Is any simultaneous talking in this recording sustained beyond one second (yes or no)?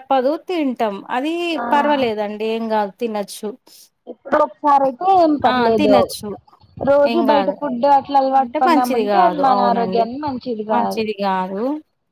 yes